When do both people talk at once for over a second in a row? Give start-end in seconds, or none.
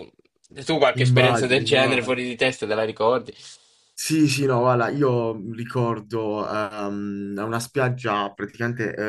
0.9-2.2